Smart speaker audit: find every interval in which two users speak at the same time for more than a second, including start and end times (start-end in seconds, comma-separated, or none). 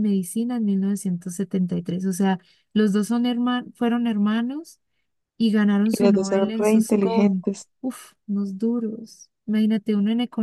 5.8-7.7